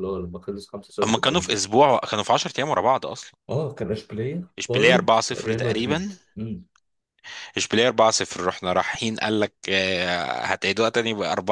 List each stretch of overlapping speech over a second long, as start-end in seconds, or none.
4.6-6.1